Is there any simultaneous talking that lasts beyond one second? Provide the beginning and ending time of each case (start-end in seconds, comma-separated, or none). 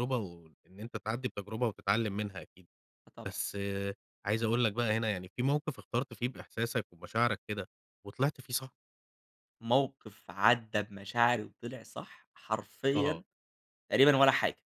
none